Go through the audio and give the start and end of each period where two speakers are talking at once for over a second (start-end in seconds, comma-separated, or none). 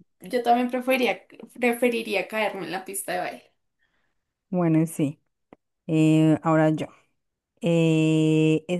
none